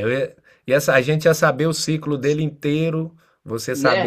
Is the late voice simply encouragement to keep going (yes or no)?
yes